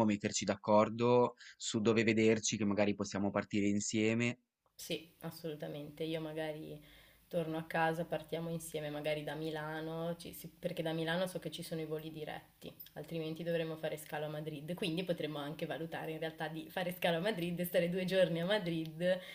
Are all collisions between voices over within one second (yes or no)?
yes